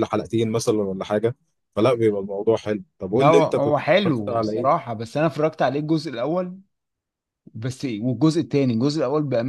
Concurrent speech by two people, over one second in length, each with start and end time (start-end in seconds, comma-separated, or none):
3.1-4.8